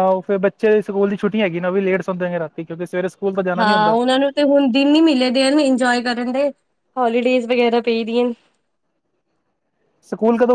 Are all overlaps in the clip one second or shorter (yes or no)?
yes